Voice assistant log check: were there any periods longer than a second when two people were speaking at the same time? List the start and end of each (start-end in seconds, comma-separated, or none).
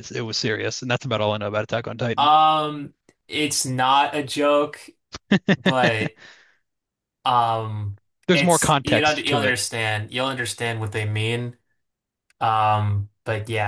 8.3-9.6